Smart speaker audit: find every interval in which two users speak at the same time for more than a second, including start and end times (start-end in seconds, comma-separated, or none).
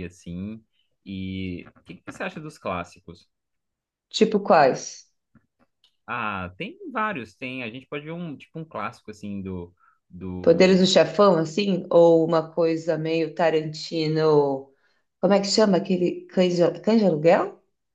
none